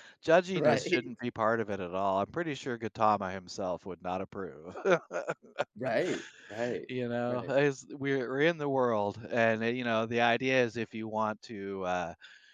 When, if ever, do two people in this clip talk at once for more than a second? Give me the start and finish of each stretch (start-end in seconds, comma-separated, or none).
none